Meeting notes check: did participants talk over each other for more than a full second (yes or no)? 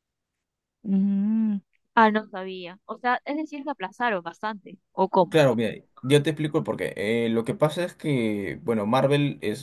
no